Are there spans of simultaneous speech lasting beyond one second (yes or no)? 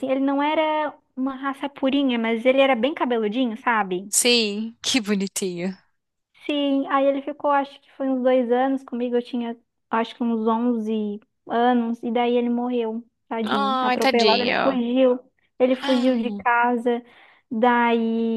yes